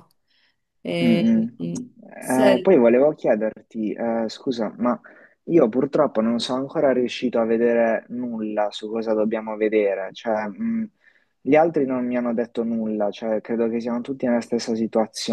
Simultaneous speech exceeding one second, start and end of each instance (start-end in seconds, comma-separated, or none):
none